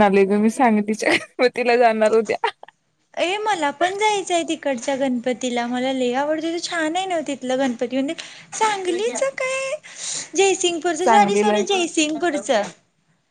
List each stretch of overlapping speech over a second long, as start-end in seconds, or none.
11.0-12.6